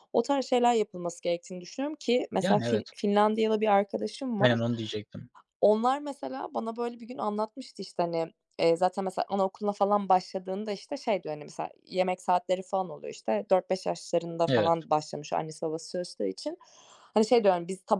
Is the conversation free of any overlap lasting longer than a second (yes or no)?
yes